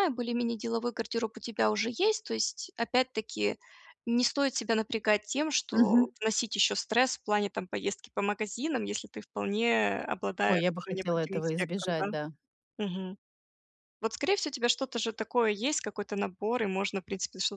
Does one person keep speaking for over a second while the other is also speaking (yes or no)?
yes